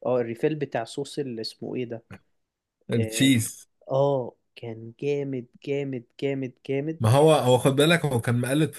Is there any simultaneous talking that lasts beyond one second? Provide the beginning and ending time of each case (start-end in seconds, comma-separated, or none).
none